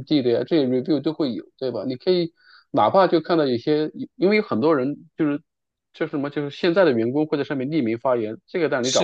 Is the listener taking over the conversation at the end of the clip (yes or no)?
no